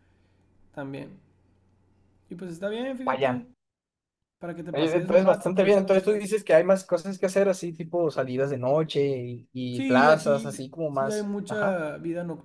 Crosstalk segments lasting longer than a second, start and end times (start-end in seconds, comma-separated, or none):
4.7-6.3, 9.7-11.8